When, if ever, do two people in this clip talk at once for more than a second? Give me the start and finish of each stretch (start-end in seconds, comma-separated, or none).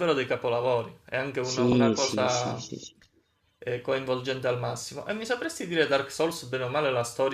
1.4-2.6